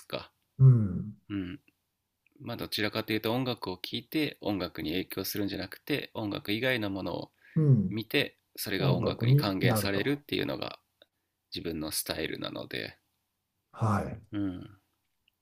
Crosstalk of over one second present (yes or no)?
yes